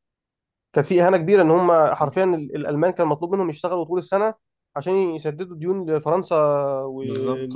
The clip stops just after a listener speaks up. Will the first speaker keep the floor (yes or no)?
no